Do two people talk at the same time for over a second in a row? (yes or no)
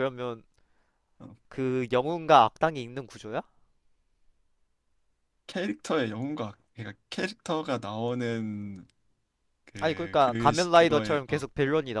yes